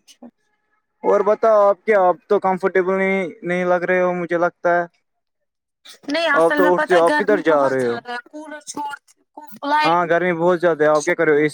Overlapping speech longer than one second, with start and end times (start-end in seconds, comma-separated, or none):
6.4-8.0